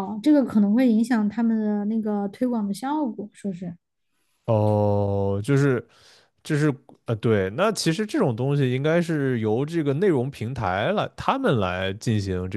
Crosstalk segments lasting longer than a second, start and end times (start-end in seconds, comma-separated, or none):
none